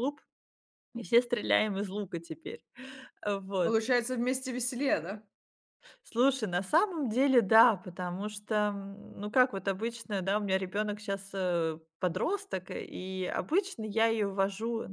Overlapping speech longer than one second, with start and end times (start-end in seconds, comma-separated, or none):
none